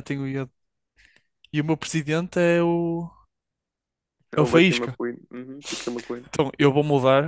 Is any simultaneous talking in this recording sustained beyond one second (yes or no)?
no